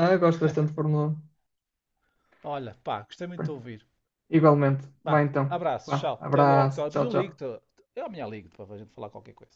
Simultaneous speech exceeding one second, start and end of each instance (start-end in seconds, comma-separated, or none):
5.0-7.4